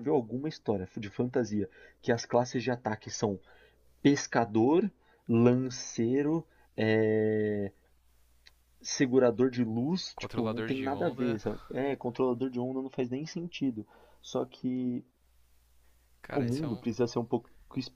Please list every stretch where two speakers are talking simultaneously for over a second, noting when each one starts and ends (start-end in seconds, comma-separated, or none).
10.2-11.4